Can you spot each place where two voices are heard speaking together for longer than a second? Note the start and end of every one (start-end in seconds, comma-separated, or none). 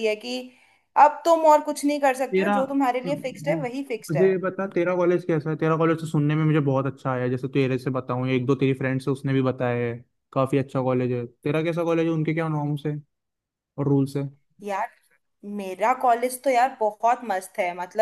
none